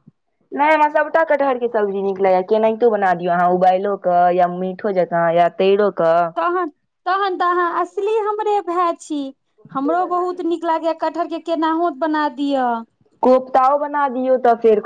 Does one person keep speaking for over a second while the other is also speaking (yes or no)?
no